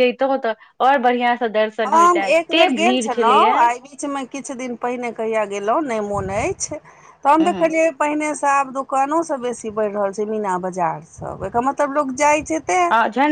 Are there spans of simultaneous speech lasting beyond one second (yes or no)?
yes